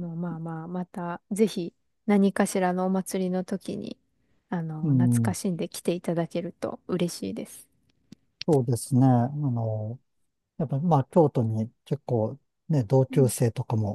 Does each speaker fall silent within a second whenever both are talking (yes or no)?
yes